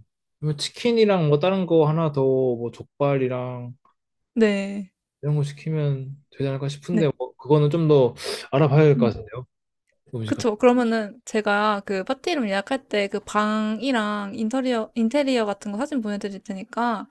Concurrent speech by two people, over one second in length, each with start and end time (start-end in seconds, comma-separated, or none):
none